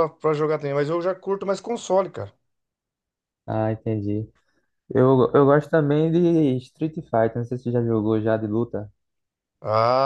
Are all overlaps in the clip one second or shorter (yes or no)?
yes